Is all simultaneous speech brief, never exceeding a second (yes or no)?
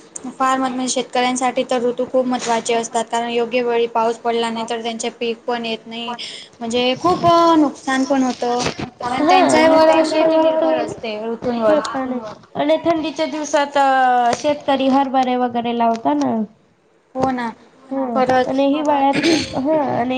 no